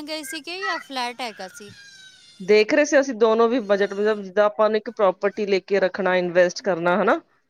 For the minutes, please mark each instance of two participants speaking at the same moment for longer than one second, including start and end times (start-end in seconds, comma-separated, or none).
none